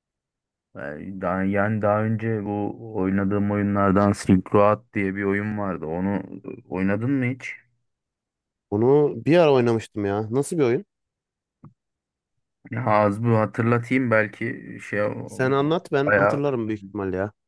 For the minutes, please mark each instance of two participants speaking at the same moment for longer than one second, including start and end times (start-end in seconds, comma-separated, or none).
none